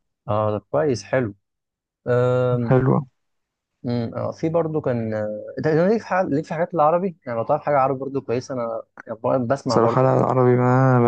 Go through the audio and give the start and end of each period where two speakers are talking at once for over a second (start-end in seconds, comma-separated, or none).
none